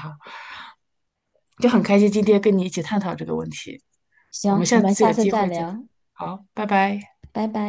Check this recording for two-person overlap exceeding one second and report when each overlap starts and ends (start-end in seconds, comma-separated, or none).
4.5-5.7